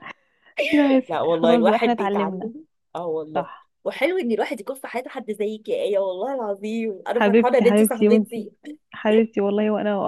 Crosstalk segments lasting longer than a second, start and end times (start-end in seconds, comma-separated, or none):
1.1-2.5, 7.1-8.5